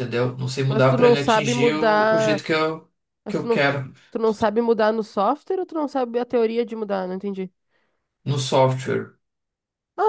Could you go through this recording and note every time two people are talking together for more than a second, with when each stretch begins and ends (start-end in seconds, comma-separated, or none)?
0.7-2.4